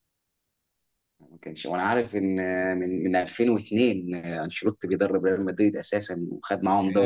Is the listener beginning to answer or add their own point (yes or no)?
yes